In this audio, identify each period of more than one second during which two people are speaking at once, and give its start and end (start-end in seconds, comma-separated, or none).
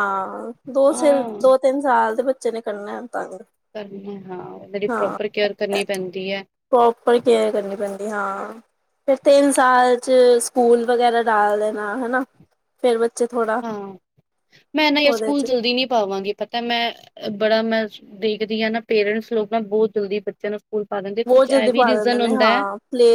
21.3-22.6